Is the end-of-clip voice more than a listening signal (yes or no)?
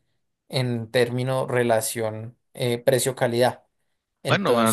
yes